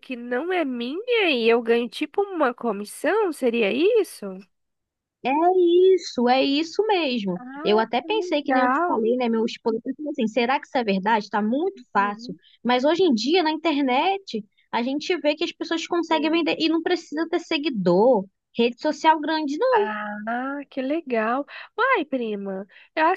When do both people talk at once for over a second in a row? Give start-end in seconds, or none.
7.3-9.0